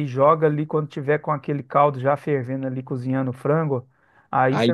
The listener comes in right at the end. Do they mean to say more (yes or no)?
no